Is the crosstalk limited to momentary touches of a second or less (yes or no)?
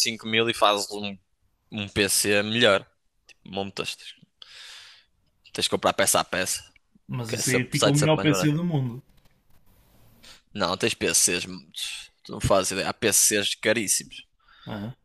no